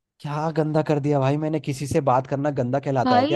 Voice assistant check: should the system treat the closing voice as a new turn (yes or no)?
yes